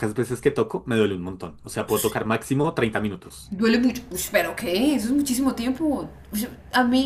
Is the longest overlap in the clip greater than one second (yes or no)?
no